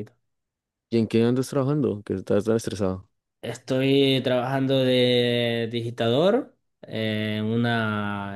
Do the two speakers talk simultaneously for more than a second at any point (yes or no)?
no